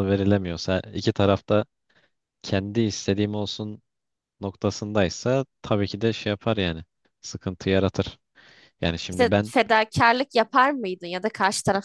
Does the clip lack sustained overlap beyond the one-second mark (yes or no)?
yes